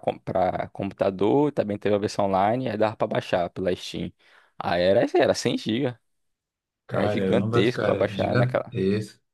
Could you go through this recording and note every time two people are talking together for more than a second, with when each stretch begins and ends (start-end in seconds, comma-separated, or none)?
6.9-8.4